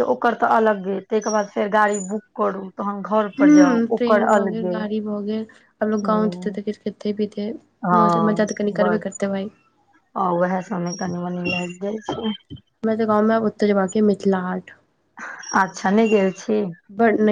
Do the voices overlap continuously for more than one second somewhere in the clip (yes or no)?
yes